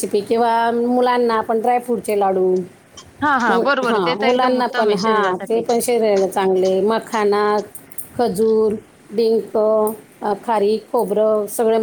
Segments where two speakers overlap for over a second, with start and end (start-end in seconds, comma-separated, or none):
3.5-5.6